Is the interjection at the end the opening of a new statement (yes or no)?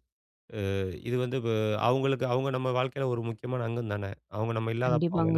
yes